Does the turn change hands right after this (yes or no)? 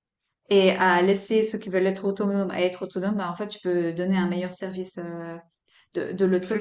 yes